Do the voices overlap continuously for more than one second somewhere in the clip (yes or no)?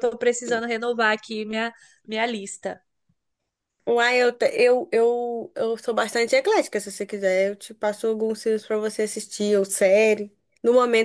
no